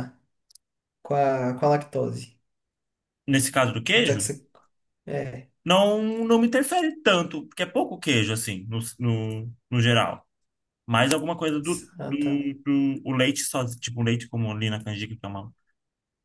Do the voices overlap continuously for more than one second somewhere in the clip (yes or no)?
no